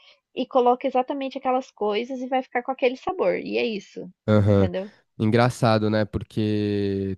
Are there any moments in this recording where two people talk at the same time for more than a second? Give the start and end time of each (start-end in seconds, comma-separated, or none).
none